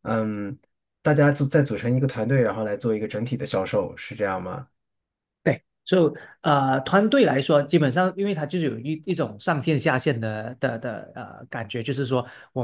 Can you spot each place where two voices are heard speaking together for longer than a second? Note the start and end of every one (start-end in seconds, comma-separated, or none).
none